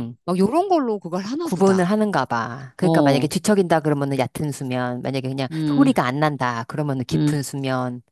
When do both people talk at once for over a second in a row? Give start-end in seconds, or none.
none